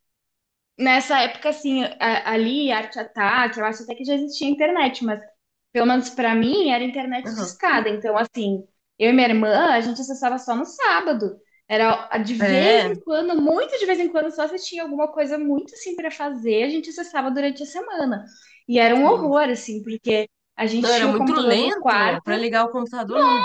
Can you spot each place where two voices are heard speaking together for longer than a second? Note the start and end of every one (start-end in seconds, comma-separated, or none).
20.8-22.2